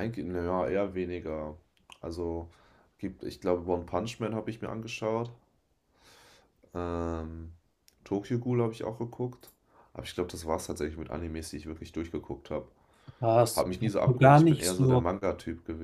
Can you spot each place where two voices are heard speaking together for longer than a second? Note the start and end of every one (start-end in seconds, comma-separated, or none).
13.5-15.1